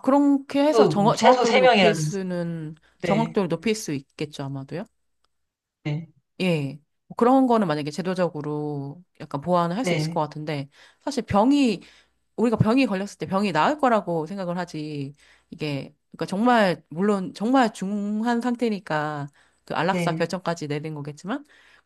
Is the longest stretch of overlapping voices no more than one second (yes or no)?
no